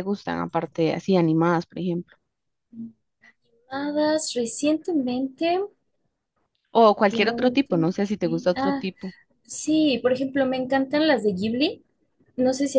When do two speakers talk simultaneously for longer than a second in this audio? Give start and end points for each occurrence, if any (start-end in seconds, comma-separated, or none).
7.1-8.8